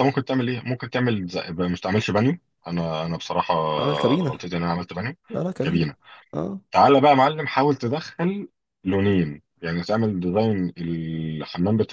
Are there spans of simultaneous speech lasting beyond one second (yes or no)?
no